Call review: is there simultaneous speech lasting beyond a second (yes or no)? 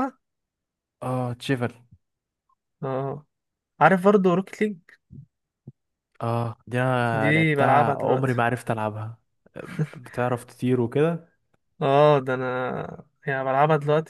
yes